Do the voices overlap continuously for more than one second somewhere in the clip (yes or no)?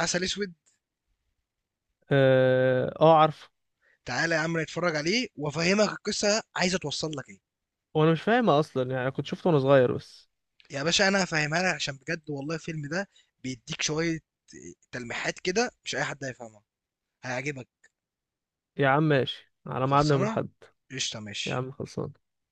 no